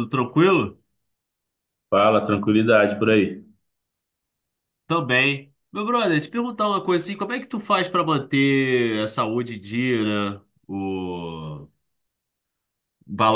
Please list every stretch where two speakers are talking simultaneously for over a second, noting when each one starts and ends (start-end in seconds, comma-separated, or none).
none